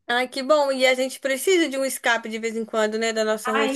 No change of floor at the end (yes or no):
no